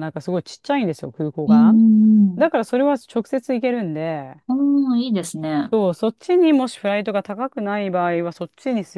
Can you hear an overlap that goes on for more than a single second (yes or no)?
no